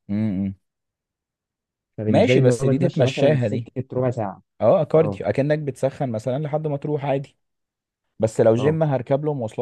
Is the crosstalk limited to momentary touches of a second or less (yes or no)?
no